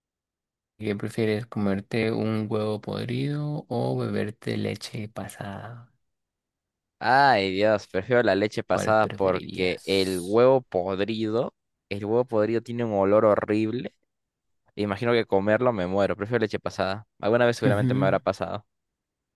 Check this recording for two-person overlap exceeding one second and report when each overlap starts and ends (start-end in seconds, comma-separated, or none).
8.7-10.4